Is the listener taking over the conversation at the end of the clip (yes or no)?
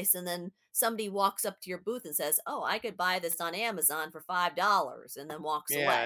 yes